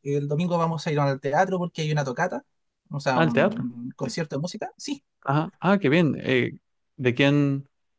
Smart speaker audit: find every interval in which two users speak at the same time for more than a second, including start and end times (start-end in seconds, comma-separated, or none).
none